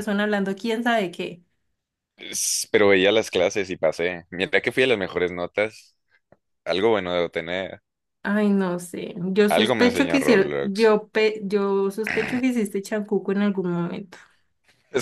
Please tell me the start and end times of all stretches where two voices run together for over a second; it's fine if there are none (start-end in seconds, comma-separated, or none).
9.5-11.0